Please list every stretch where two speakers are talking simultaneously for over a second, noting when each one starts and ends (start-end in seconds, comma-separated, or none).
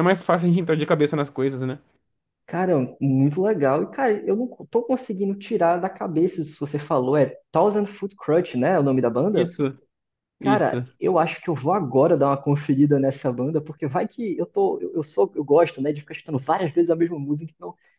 none